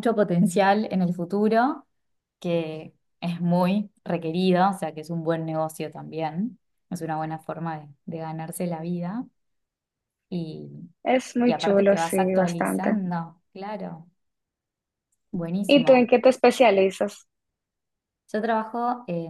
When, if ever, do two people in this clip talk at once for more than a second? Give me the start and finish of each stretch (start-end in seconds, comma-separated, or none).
11.4-13.0